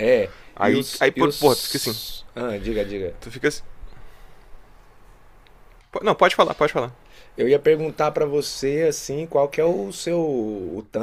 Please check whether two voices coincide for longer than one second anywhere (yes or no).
yes